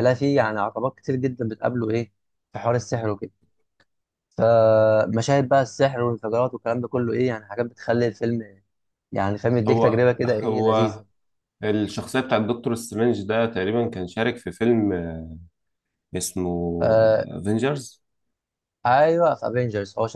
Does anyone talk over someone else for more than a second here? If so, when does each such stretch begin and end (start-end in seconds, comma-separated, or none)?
9.7-11.0